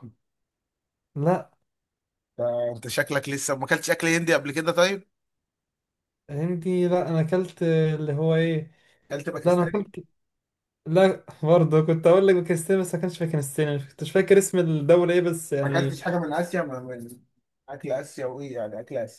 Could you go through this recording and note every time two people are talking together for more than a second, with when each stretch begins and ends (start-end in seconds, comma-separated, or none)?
none